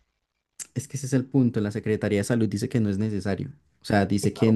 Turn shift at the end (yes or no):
no